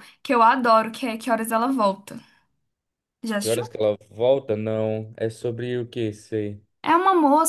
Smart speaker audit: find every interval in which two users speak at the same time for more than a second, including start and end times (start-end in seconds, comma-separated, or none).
none